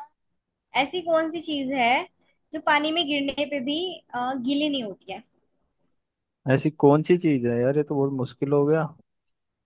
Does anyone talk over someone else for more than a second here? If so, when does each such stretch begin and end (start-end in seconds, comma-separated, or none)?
none